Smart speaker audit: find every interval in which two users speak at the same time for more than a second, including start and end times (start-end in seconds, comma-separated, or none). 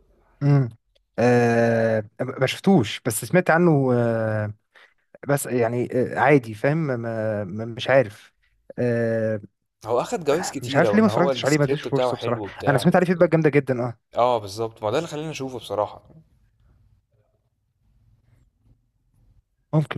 10.6-13.1